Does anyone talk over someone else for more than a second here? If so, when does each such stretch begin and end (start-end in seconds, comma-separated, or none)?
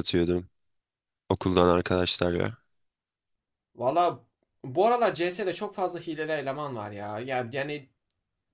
none